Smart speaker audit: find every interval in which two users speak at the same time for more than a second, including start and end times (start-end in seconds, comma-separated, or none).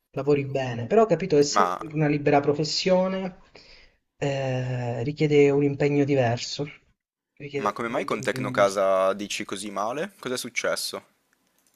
7.6-8.8